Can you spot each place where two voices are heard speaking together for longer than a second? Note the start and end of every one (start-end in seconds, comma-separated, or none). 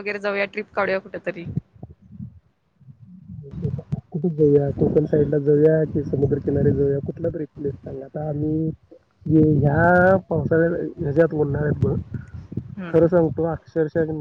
none